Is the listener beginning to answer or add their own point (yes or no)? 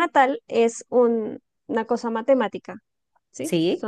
no